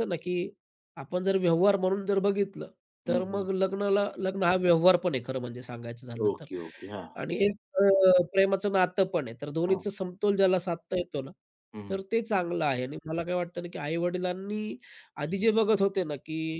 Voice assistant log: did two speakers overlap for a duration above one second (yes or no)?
no